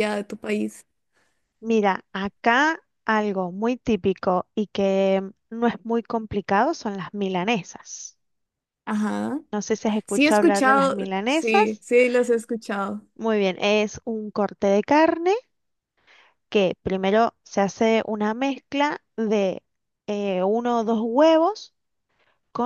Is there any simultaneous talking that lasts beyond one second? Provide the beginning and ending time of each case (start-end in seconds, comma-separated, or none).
10.1-11.8